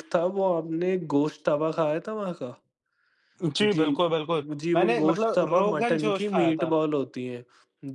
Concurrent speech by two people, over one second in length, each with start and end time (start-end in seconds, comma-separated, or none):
4.6-6.7